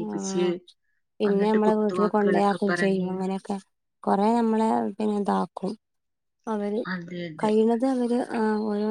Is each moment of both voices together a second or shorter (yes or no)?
no